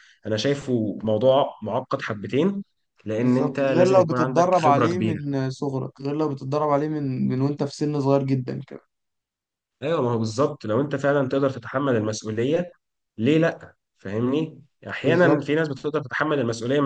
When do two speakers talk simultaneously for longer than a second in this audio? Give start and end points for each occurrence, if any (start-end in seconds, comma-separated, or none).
3.2-5.2